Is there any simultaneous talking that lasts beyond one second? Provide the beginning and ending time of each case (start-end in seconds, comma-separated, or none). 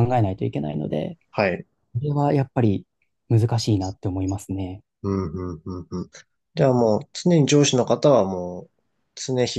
none